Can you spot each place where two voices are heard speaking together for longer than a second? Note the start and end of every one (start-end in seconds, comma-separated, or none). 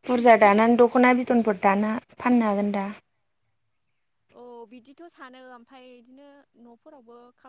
none